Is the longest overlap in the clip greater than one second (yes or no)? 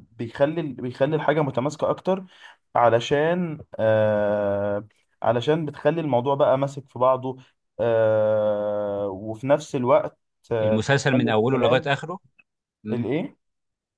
yes